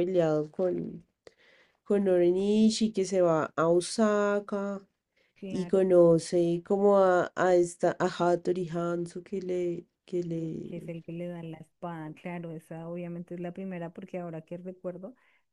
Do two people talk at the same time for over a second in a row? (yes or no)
no